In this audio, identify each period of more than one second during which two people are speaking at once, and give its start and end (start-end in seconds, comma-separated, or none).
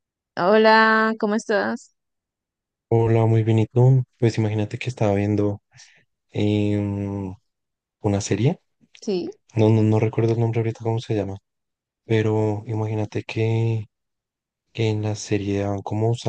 none